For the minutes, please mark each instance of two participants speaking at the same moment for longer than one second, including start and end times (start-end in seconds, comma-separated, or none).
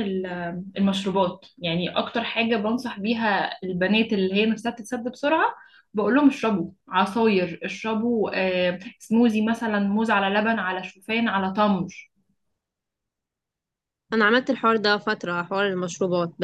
none